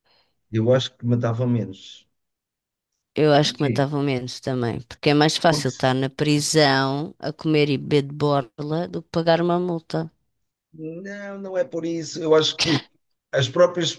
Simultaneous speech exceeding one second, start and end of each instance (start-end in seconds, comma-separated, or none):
none